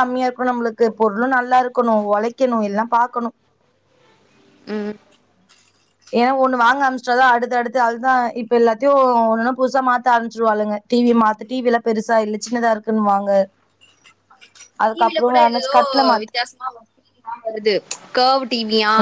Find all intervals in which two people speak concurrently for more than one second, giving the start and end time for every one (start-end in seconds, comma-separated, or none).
none